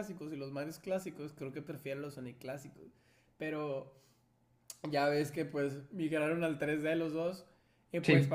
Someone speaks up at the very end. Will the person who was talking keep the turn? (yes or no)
yes